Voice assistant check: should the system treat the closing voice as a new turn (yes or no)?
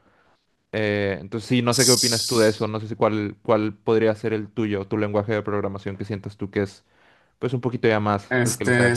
yes